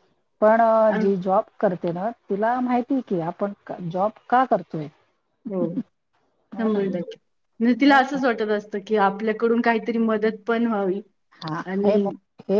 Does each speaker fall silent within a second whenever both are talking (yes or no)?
yes